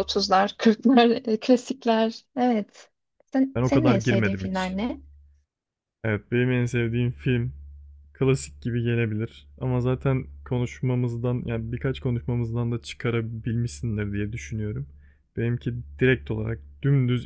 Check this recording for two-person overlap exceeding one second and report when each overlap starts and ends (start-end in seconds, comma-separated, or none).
3.5-4.8